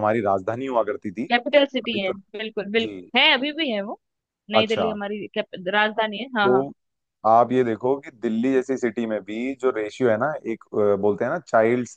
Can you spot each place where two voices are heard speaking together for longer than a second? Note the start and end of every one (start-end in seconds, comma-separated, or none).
none